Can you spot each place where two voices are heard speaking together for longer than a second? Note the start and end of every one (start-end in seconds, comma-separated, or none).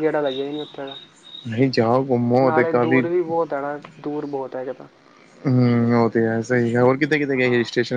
none